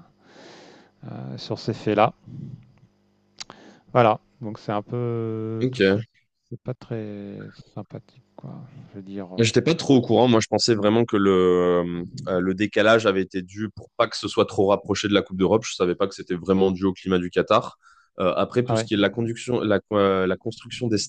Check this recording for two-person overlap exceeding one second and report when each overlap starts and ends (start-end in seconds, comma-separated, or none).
none